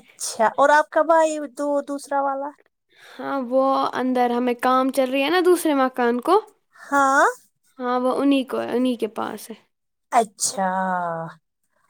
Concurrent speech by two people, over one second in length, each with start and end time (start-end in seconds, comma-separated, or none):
none